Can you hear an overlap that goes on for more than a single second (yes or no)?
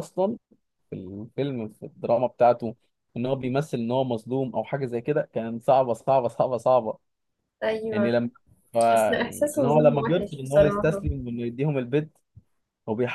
yes